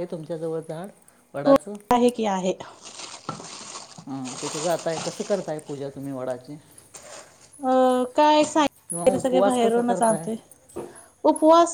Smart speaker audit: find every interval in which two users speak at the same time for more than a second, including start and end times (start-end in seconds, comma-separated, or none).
8.9-10.2